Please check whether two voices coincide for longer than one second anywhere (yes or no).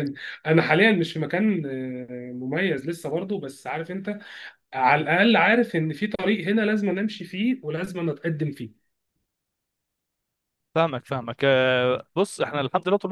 no